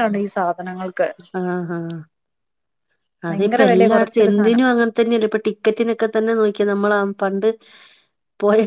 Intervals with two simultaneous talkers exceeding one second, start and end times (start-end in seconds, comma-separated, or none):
3.3-4.6